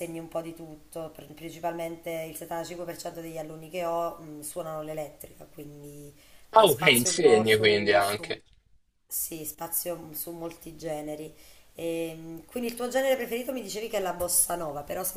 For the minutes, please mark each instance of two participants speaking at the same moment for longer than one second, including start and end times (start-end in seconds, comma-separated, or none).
6.5-8.4